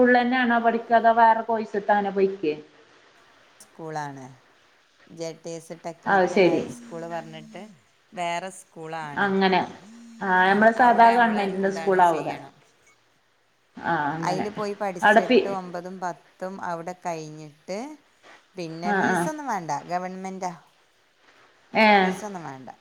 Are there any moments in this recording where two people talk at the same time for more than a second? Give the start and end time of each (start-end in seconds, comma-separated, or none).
10.5-12.3